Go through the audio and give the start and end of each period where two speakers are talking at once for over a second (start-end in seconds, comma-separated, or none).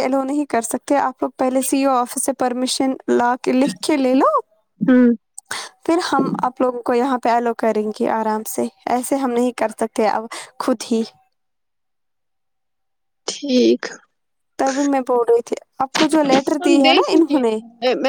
15.9-17.4